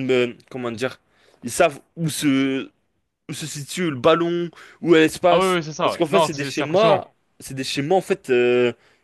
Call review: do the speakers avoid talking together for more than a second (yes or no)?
no